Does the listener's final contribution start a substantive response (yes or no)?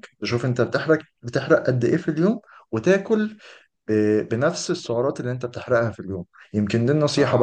no